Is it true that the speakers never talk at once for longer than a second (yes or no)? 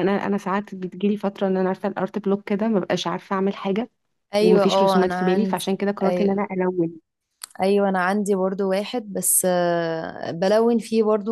no